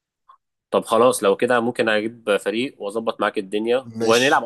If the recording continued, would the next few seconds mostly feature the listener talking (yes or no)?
no